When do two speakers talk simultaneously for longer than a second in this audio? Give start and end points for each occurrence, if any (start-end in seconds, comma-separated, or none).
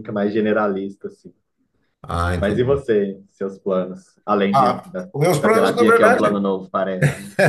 4.5-6.4